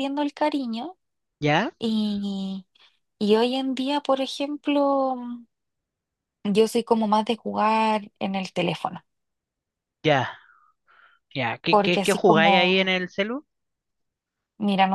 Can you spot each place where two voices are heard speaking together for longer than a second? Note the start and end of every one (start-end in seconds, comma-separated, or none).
11.7-12.9